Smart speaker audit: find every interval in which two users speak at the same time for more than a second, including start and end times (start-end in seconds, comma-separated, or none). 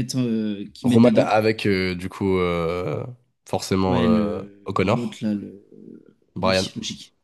3.9-5.2